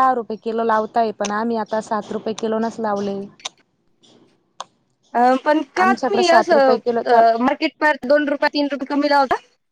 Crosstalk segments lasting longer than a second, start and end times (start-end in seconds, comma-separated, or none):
5.8-7.2